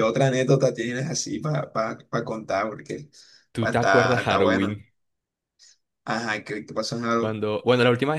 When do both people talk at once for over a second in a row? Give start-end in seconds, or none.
3.6-4.8